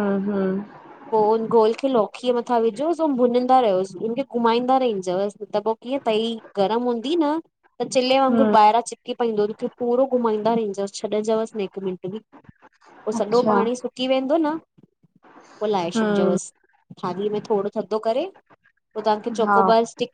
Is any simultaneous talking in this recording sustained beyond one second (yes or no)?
no